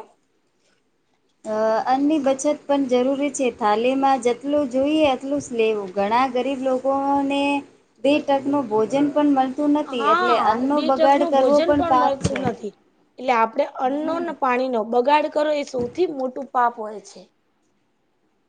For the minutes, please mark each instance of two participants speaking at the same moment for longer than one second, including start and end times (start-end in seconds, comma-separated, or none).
9.9-12.4